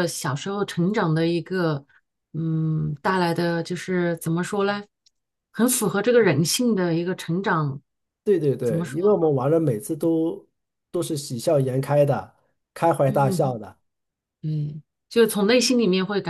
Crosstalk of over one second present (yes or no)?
no